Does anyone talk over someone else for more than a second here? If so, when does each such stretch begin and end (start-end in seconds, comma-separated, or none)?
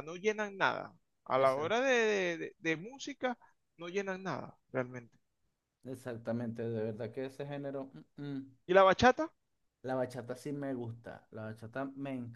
none